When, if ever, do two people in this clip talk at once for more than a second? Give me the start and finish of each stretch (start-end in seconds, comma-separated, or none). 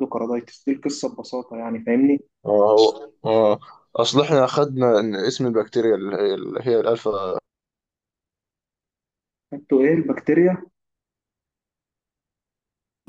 none